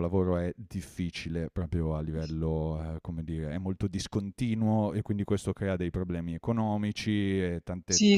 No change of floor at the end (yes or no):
yes